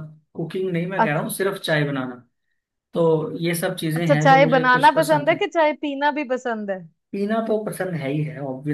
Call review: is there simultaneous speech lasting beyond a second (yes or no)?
yes